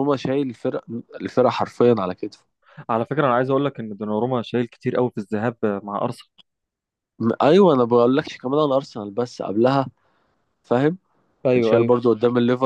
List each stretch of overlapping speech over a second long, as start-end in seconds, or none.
none